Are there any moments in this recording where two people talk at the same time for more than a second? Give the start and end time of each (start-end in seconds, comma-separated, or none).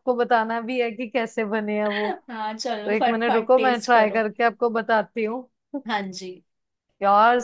2.9-4.2